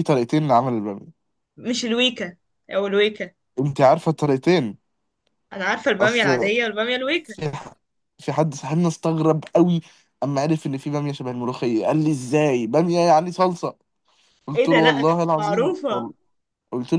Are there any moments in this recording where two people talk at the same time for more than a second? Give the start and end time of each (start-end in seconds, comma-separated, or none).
14.6-16.1